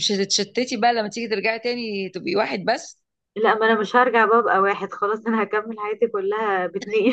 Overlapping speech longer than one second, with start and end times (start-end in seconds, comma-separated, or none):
none